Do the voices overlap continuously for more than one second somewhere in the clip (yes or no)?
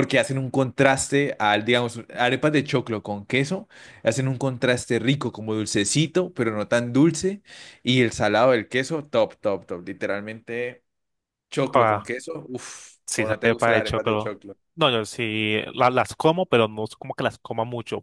yes